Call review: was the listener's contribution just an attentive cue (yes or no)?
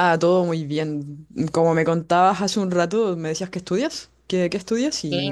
no